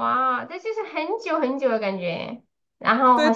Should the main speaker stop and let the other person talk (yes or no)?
yes